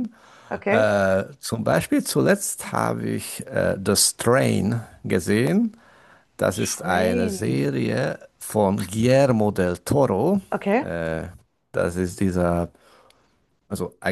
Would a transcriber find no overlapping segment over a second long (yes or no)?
no